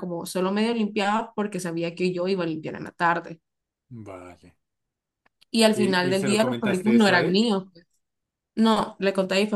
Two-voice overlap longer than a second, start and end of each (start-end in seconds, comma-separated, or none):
5.7-7.5